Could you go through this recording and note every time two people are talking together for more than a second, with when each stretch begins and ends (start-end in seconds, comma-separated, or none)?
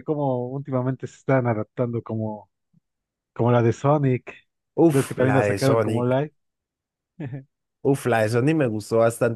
4.9-6.2